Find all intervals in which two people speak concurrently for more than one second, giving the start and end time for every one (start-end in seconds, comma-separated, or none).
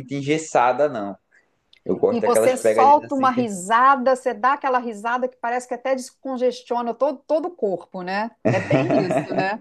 2.1-3.5